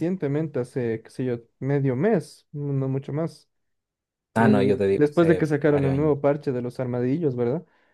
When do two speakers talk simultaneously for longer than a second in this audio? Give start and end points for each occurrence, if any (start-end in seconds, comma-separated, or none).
4.3-6.1